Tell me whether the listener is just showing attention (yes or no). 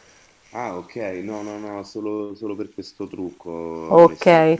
no